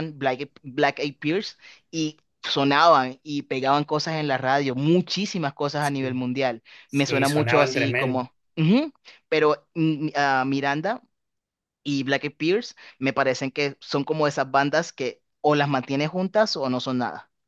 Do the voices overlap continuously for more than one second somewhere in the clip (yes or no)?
yes